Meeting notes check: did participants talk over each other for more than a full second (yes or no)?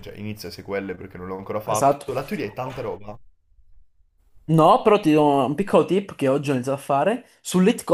no